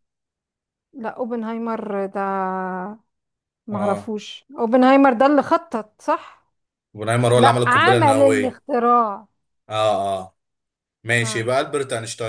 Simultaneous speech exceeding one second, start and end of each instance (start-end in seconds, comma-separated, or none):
7.3-8.6